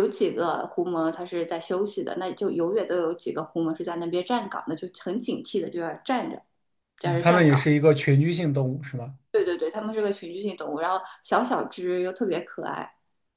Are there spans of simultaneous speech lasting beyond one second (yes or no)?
no